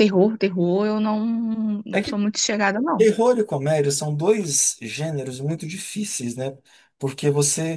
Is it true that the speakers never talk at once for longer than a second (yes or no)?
yes